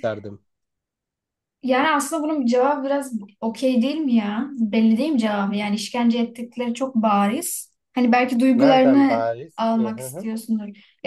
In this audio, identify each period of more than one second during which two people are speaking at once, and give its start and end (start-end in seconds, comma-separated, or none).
8.5-10.3